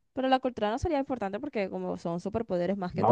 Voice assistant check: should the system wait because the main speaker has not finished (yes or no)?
no